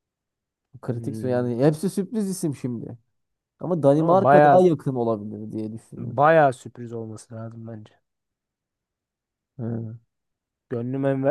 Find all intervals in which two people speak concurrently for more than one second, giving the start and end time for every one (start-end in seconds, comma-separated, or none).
none